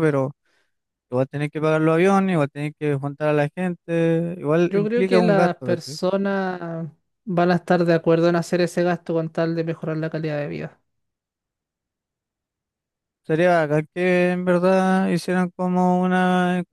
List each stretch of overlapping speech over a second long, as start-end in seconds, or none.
4.6-6.0